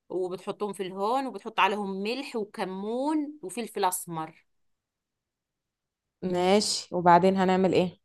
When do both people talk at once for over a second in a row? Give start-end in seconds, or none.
none